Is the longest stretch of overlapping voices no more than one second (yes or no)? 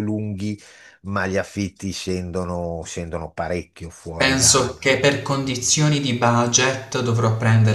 yes